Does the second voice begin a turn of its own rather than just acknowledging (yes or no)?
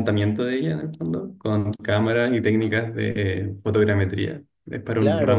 yes